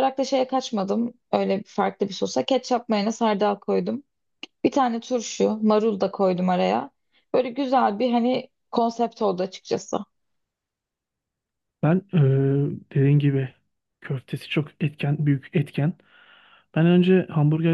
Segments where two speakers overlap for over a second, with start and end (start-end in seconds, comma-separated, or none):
none